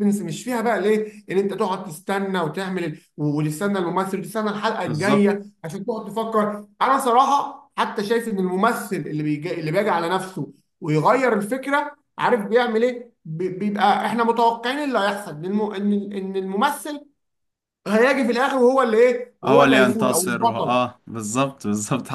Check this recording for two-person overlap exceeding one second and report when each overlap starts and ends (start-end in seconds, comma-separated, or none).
19.4-20.8